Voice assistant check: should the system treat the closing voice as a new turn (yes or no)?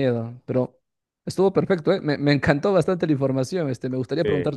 no